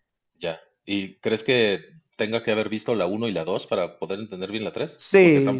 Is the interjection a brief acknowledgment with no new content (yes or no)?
no